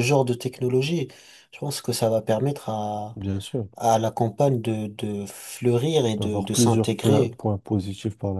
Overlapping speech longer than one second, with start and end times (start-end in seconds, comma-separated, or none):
6.2-7.4